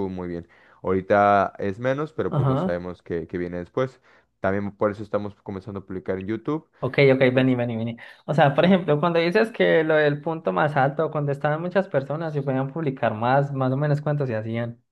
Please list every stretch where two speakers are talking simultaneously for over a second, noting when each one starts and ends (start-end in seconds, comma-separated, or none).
none